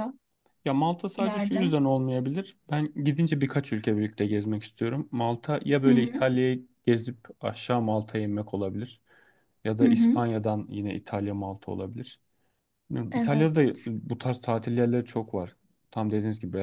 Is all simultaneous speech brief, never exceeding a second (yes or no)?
yes